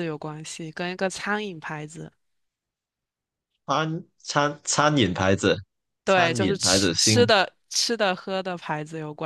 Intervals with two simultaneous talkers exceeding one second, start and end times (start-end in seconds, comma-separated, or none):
6.0-7.3